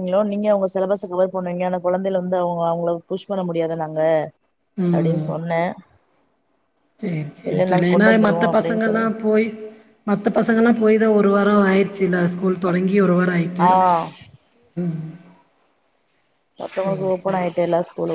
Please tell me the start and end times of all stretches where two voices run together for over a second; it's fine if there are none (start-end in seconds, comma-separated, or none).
7.5-9.0